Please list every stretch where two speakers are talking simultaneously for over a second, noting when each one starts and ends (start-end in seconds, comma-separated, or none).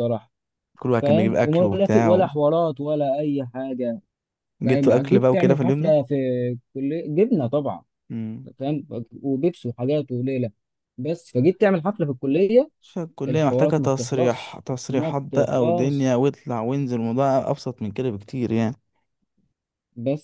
1.0-2.3, 4.7-5.9, 13.3-16.1